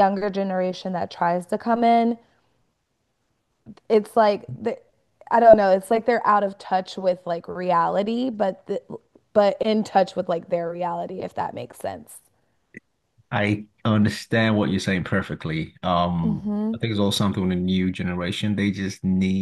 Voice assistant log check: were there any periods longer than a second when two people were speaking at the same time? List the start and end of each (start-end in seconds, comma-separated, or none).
none